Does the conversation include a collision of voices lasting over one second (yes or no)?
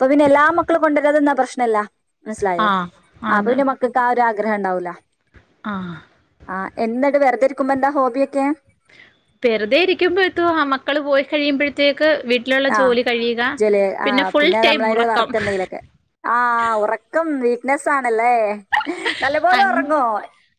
no